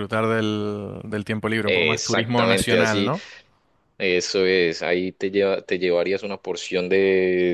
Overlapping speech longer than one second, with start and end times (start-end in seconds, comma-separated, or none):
1.6-3.1